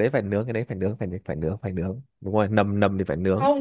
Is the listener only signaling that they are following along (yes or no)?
no